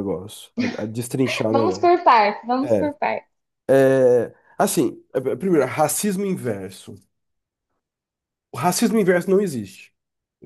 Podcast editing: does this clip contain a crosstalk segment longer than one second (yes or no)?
no